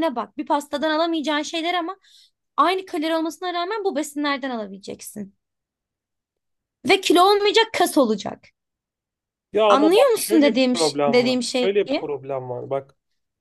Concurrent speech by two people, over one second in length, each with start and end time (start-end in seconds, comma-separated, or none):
9.7-11.7